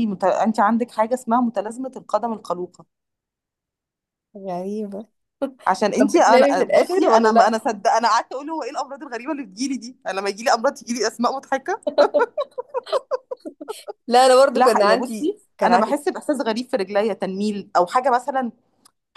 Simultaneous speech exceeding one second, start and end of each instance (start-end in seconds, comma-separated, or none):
6.0-7.6, 14.6-15.9